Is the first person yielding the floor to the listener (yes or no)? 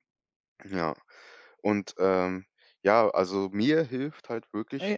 no